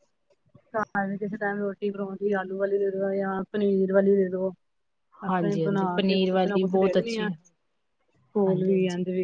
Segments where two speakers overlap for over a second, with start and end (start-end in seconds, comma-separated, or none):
5.3-7.3